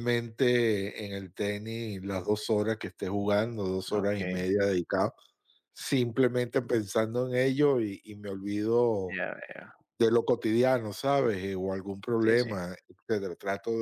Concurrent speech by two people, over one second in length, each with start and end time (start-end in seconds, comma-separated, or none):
none